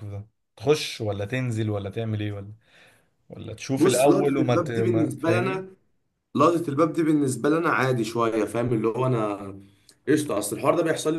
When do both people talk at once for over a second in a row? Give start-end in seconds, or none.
3.8-5.7